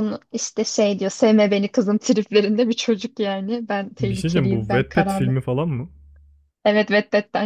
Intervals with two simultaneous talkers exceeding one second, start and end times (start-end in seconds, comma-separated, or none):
4.0-5.4